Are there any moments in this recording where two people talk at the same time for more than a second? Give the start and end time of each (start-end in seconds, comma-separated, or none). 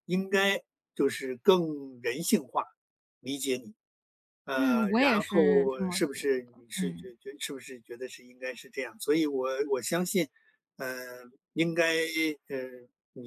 4.5-7.1